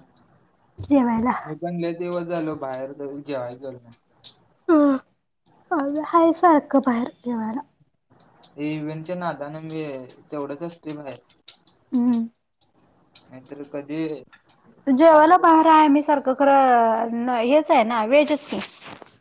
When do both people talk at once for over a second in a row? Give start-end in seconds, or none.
none